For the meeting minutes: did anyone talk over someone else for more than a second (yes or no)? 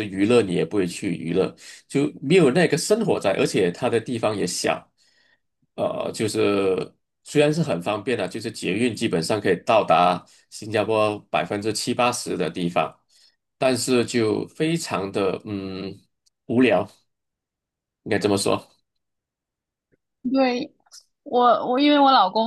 no